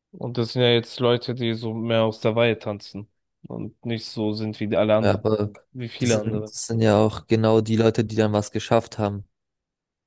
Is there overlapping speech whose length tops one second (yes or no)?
no